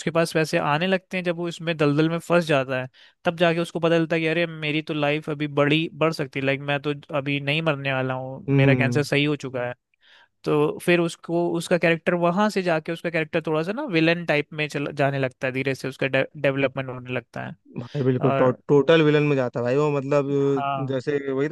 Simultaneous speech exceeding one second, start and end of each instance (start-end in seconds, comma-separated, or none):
none